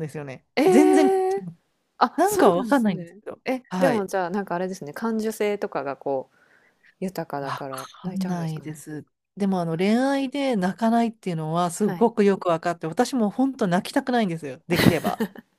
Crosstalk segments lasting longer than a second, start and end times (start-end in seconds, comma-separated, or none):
2.2-4.1, 7.4-8.8